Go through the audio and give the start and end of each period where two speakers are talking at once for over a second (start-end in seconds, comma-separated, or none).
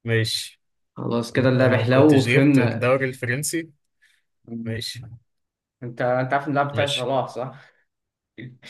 1.4-2.9